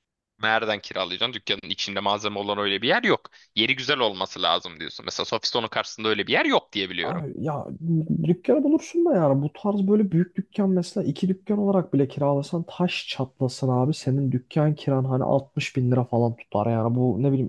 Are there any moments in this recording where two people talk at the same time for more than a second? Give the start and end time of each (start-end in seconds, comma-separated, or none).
none